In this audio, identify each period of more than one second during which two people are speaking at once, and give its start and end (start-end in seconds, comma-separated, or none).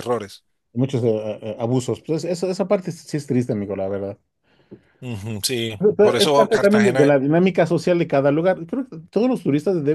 5.8-7.2